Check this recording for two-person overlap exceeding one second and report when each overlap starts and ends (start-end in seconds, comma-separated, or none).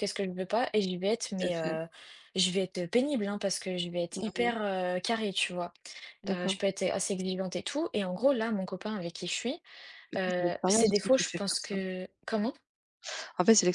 10.2-11.8